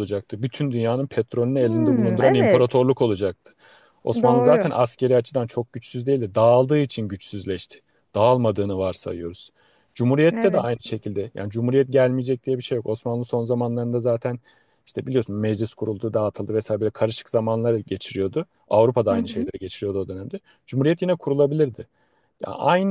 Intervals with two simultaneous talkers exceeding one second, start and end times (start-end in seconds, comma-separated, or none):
1.6-2.8